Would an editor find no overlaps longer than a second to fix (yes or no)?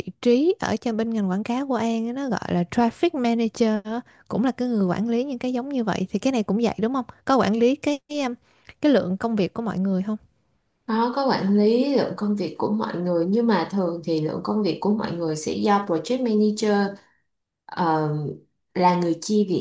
yes